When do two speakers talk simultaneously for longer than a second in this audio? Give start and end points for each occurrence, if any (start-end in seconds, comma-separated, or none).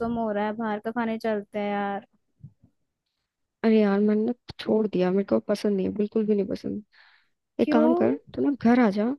none